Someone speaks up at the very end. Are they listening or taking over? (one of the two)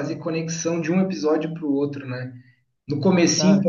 listening